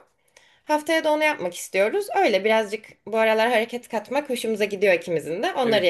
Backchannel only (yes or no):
no